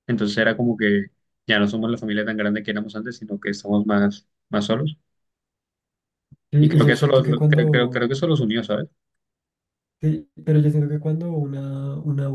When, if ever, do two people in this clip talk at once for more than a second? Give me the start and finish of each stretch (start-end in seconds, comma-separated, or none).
6.6-8.1